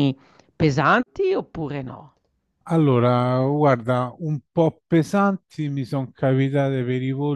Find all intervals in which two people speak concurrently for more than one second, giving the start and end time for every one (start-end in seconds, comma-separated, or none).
none